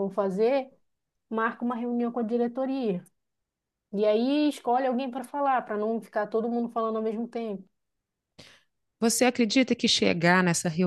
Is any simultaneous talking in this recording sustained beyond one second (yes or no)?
no